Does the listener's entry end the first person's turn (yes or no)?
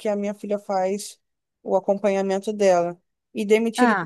no